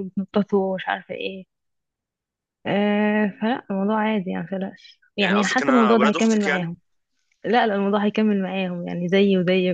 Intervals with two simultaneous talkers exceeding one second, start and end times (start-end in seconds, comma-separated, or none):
5.2-6.7